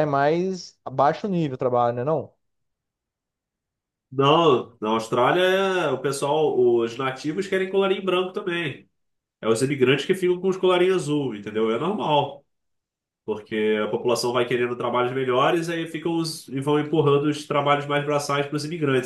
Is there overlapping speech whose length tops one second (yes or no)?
no